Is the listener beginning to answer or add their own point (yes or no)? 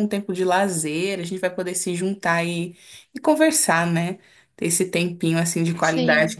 no